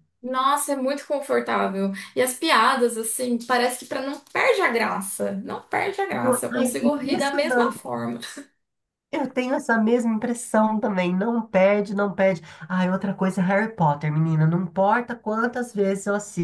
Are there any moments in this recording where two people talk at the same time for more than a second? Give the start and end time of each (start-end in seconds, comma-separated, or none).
6.1-7.8